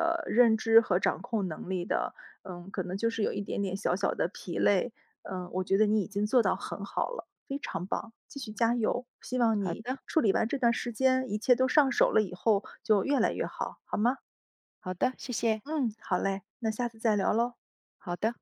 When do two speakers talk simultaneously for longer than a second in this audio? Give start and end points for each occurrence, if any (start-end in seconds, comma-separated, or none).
none